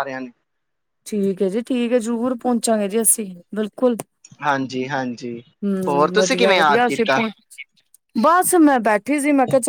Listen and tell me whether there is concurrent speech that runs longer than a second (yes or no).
yes